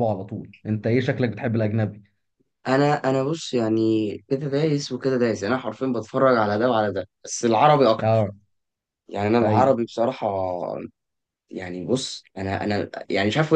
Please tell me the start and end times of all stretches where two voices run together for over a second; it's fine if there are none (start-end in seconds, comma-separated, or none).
none